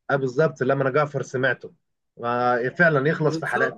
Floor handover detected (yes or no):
no